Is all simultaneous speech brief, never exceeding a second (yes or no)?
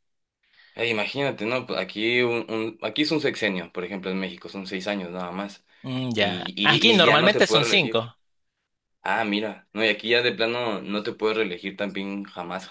no